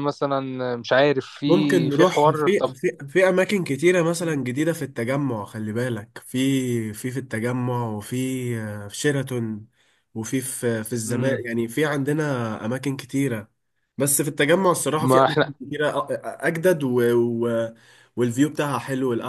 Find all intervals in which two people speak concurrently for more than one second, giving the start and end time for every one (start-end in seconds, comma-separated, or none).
1.4-2.7